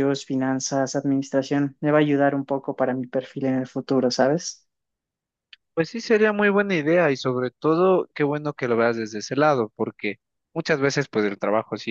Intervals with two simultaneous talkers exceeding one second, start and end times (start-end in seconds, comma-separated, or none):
none